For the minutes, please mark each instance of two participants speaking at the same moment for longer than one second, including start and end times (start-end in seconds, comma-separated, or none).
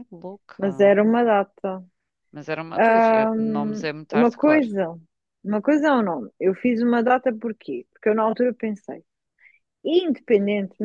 2.8-4.7